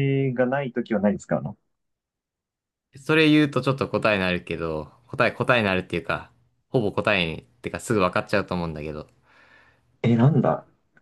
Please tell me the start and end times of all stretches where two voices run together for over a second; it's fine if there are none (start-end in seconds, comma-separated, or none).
none